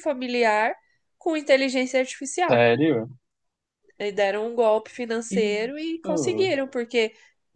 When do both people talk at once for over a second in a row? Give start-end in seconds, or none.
5.3-6.6